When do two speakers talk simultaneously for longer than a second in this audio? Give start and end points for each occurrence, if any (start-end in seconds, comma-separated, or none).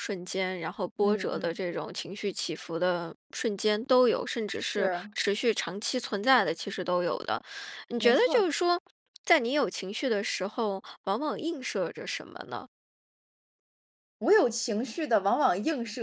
none